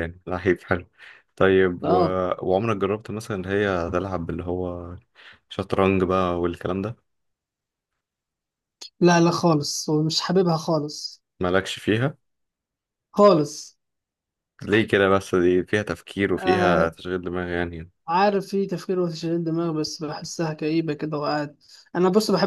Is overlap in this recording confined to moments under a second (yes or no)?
yes